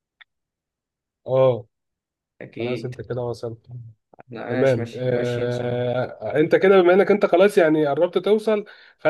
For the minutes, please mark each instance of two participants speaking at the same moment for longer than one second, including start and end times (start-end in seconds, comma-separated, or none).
4.5-5.8